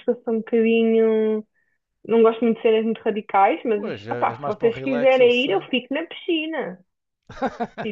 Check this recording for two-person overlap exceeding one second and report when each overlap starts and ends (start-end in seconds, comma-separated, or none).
3.7-5.7